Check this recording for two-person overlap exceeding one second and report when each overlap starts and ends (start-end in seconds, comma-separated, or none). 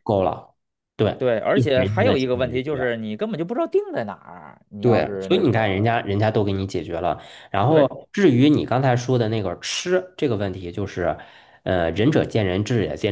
1.5-2.8, 4.8-6.0